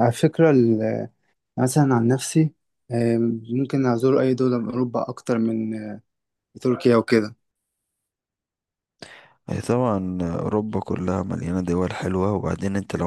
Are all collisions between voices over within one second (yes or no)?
yes